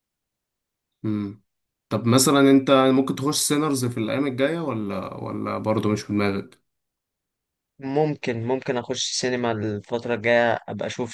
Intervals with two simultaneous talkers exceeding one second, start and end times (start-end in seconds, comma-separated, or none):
none